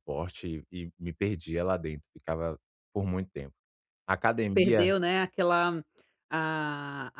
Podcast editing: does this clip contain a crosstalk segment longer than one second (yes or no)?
no